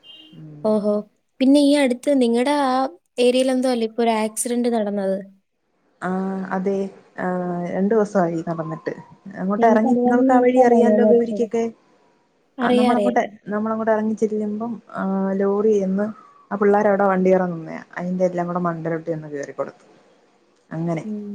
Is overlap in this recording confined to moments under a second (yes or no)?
no